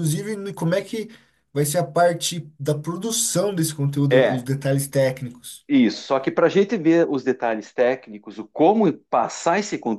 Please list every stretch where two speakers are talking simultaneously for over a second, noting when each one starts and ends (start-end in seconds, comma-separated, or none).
none